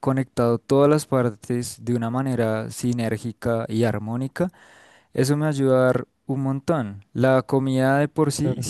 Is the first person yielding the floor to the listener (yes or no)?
no